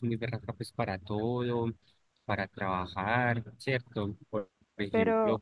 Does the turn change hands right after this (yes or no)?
no